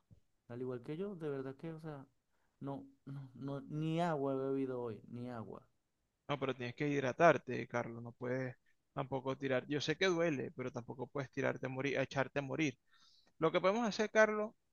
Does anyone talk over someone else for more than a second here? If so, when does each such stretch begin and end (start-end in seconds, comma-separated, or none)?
none